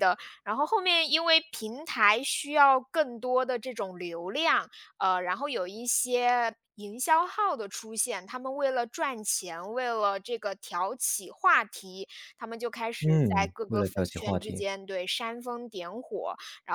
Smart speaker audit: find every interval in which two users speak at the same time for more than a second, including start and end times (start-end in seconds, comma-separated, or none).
13.0-14.6